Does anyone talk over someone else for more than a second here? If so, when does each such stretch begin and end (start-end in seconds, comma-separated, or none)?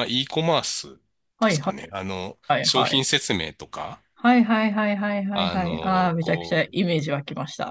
5.3-6.7